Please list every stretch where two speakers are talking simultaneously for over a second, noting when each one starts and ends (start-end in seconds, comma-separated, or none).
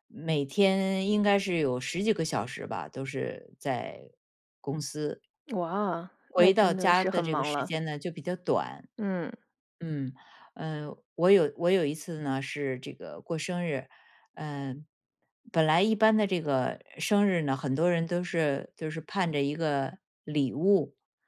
6.2-7.7